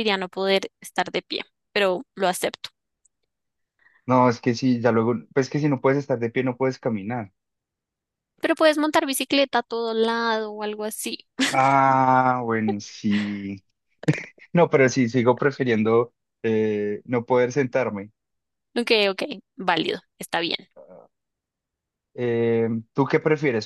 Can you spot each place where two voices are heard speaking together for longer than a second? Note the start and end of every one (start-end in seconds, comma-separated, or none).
none